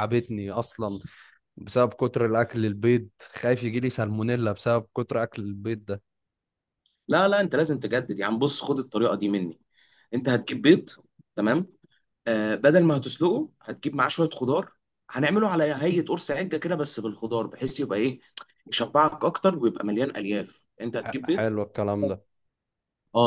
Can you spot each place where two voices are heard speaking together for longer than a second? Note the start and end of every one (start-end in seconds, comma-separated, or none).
none